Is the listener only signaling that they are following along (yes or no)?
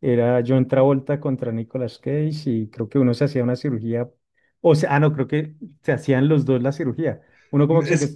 yes